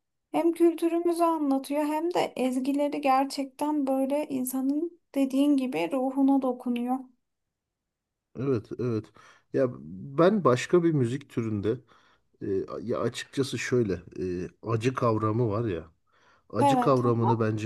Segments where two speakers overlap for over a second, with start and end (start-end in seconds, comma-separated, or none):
none